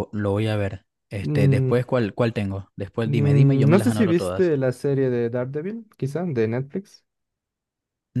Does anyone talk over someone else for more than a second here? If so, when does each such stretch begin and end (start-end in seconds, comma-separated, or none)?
3.0-4.5